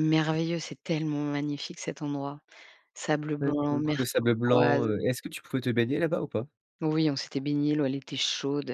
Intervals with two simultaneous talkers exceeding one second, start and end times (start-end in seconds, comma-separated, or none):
3.4-4.9